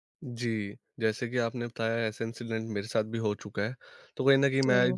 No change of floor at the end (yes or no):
yes